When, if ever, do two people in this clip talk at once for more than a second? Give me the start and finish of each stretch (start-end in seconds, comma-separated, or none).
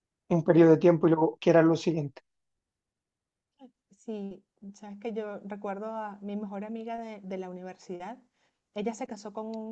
none